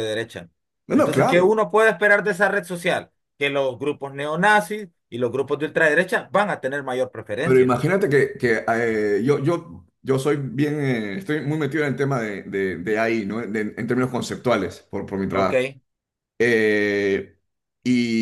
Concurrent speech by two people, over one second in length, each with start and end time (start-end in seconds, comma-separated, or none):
none